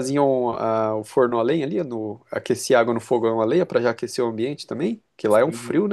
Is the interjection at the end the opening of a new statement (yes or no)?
yes